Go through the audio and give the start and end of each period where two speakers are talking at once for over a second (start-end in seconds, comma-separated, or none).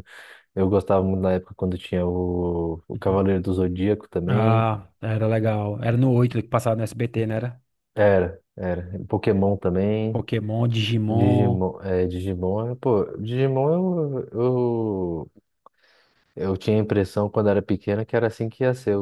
none